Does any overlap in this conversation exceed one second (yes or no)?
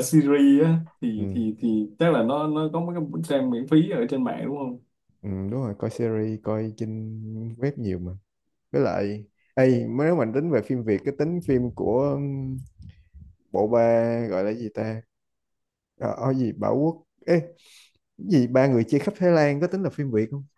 no